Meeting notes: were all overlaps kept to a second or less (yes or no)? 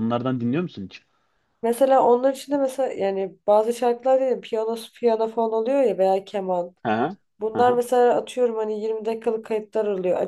yes